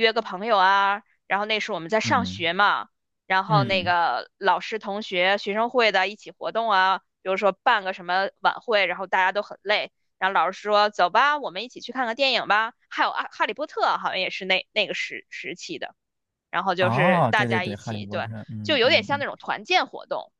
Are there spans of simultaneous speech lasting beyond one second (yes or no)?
yes